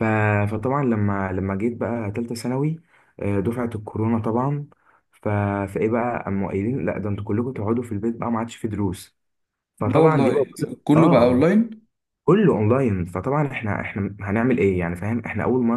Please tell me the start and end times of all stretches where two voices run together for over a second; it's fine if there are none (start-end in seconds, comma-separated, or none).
9.8-11.6